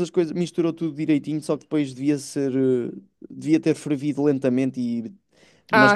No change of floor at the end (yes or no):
yes